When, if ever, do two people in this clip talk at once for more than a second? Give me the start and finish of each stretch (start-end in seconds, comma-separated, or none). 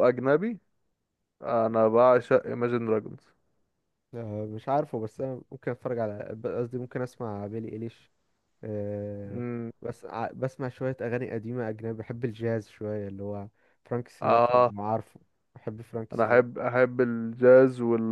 none